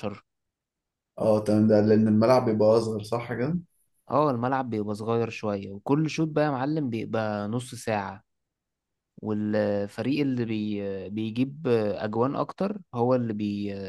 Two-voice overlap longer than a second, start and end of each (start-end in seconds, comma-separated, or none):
none